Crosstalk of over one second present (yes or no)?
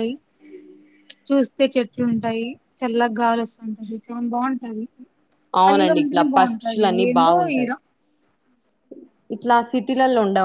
yes